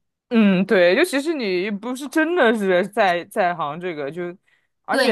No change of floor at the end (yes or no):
no